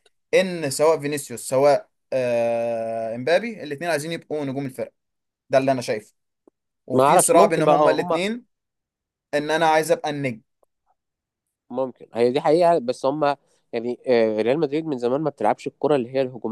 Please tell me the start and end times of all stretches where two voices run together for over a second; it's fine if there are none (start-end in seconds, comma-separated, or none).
6.9-8.2